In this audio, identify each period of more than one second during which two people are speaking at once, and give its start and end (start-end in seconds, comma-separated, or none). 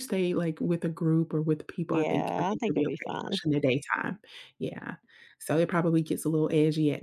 1.9-3.4